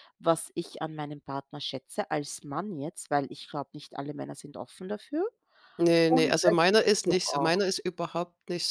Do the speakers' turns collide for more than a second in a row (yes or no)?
yes